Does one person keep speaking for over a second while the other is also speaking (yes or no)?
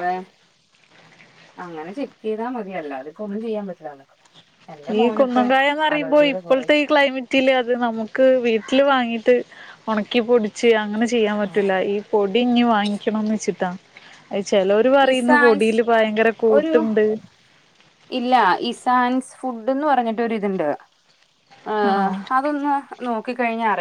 no